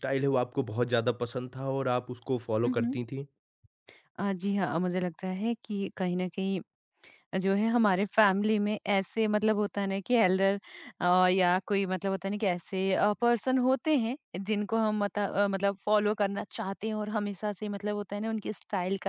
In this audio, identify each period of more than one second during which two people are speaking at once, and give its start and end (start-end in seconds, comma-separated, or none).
none